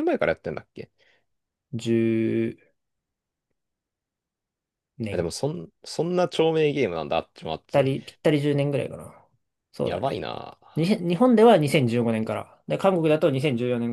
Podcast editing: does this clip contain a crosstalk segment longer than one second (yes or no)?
no